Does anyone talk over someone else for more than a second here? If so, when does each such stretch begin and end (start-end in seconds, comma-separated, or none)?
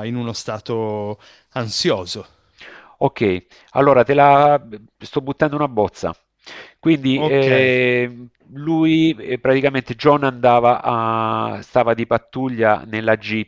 none